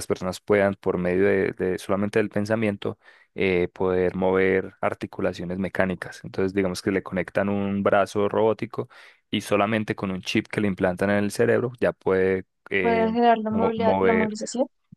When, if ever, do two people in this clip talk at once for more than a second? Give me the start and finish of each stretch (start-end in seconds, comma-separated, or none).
12.8-14.3